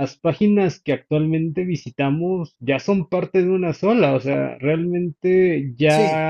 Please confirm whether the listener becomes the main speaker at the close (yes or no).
no